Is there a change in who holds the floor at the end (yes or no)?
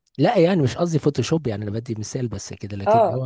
yes